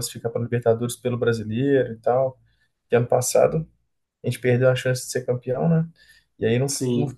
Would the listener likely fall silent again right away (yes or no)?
yes